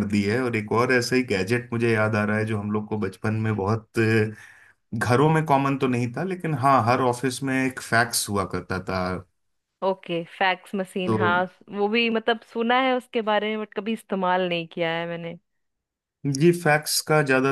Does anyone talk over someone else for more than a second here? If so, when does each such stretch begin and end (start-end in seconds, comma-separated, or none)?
none